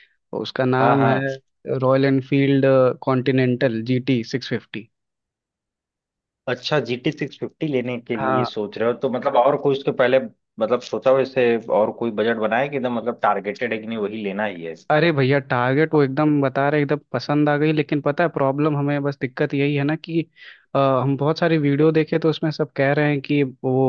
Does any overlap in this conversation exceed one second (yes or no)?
no